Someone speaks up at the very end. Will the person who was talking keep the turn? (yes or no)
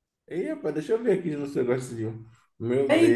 no